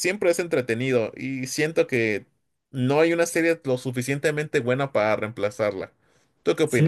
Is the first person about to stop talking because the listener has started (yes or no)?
yes